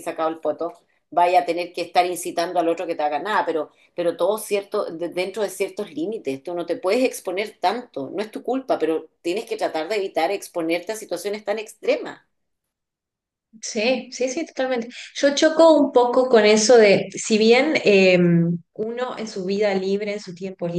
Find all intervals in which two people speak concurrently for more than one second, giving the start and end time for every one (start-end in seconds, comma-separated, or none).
none